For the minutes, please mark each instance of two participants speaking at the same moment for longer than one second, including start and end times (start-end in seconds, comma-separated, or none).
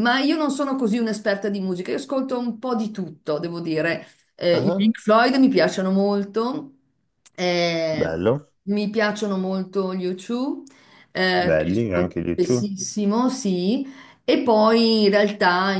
11.3-12.7